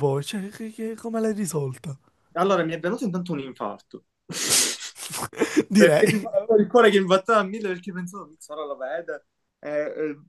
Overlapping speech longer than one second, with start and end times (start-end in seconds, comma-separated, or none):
none